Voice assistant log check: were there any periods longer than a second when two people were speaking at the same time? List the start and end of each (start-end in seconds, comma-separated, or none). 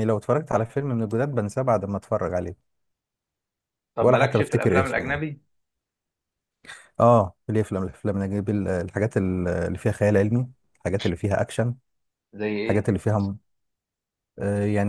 4.0-5.2